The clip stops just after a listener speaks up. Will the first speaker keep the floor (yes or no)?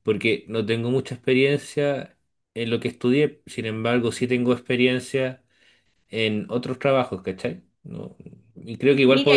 yes